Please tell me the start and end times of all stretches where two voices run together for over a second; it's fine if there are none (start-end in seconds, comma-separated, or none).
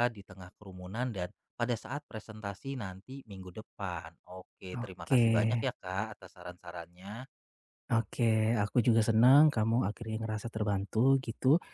none